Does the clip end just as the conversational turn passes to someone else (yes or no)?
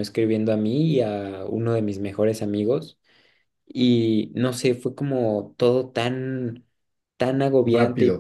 yes